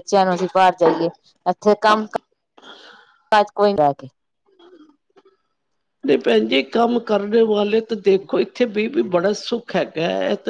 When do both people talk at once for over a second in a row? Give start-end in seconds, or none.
none